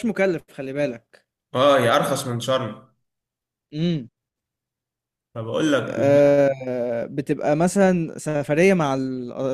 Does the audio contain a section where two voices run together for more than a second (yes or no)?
no